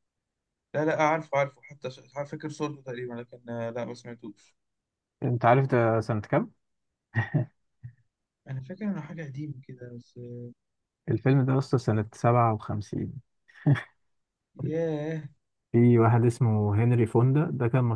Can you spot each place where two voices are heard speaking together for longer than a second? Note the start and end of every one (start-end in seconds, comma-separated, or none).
none